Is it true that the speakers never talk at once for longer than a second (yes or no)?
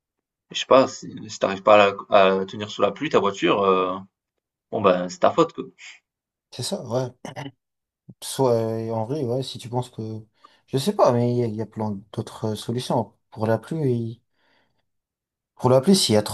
yes